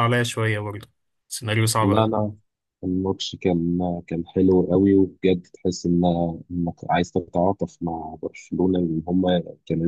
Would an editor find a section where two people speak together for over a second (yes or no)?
no